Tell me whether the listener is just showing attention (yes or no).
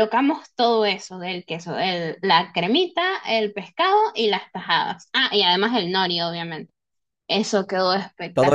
no